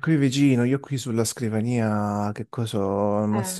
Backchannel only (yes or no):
yes